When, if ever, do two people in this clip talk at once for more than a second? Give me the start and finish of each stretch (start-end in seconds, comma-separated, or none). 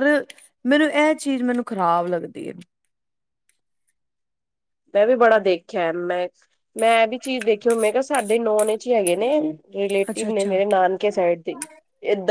none